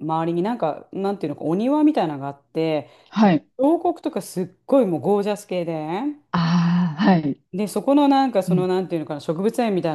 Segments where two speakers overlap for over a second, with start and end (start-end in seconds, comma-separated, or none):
none